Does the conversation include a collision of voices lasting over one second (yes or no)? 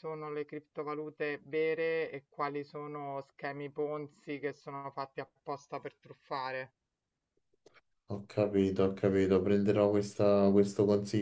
no